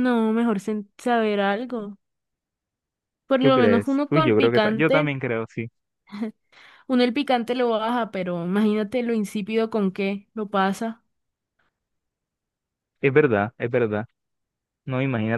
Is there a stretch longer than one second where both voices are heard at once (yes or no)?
yes